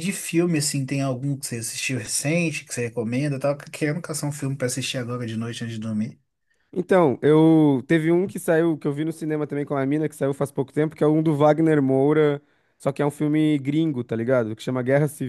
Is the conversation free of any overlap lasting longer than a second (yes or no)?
yes